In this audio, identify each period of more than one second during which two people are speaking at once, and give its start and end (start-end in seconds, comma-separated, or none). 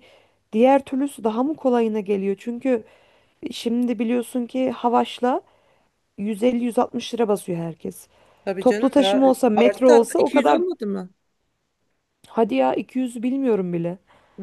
8.6-10.6